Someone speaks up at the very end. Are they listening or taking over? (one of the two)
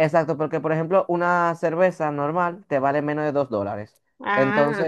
listening